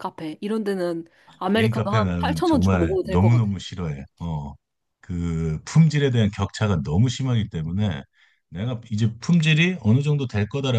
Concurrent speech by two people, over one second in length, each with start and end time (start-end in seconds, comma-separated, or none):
1.5-3.4